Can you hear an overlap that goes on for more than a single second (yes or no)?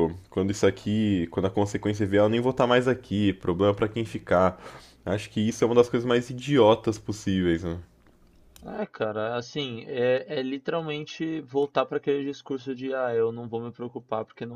no